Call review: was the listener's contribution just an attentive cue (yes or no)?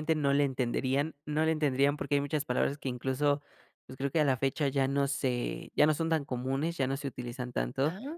yes